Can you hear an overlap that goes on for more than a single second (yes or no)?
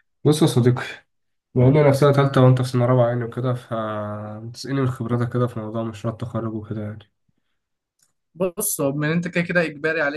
no